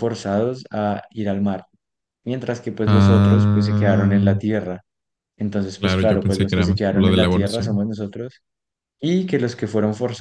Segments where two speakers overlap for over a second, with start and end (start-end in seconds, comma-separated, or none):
2.9-4.3, 5.8-7.8